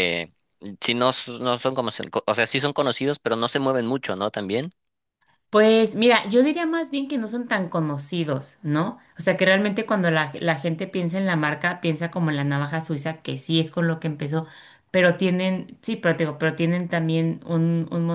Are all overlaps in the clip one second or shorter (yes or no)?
yes